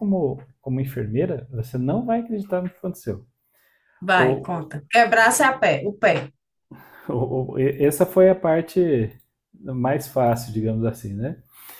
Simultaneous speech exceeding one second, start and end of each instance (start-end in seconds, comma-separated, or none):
none